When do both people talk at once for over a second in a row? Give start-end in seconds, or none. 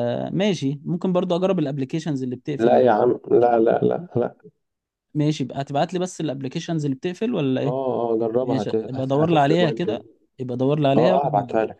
8.4-10.0